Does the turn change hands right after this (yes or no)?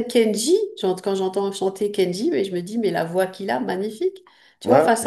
no